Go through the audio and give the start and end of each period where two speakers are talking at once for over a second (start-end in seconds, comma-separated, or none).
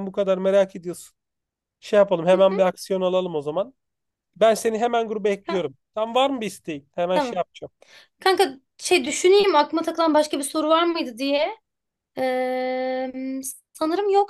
none